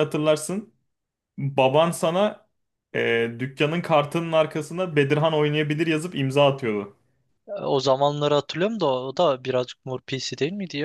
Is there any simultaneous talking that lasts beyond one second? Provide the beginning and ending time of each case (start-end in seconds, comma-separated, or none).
none